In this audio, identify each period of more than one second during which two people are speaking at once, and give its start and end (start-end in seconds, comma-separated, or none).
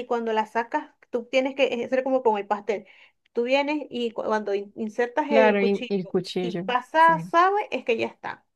5.3-7.3